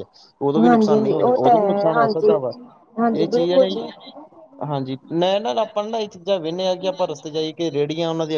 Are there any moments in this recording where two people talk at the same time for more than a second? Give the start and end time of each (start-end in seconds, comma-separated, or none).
0.7-2.4